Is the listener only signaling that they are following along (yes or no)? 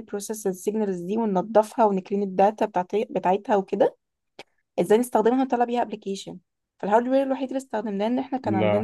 yes